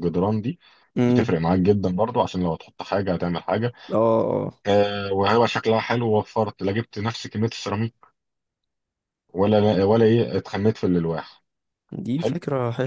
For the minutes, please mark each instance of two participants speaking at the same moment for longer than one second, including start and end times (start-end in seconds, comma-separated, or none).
none